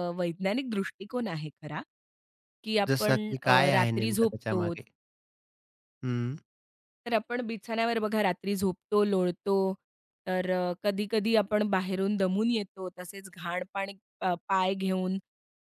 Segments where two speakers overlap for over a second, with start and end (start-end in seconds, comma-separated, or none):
2.9-4.7